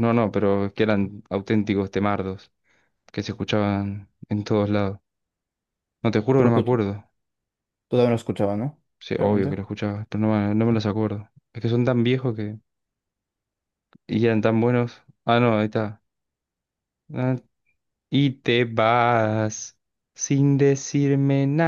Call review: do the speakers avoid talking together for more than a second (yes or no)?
yes